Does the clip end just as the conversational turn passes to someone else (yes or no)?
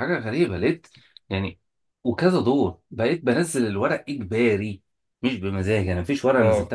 no